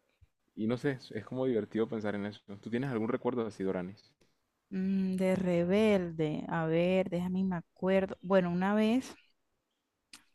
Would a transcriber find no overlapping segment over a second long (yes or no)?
yes